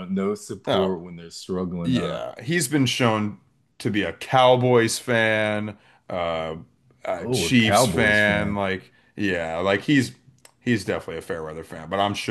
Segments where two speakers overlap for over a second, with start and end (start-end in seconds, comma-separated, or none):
7.2-8.6